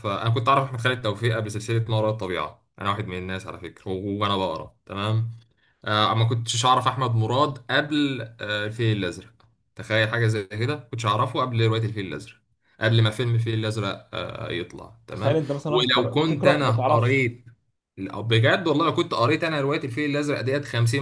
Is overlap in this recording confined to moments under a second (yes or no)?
no